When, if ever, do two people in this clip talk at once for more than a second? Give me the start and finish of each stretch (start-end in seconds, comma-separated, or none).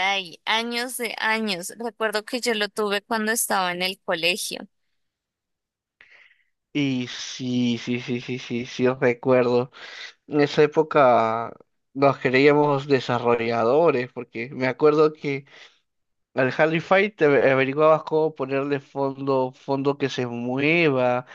none